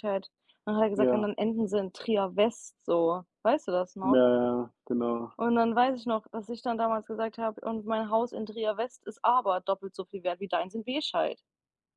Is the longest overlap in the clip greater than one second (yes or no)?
no